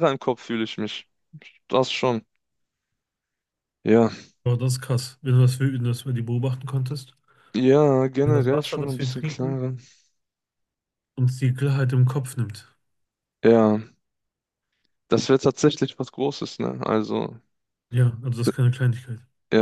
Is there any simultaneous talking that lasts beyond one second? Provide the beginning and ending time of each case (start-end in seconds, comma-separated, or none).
8.2-9.6